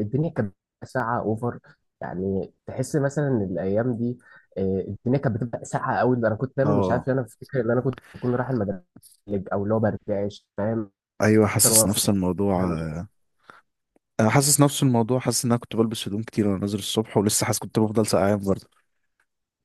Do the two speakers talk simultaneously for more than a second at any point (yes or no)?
no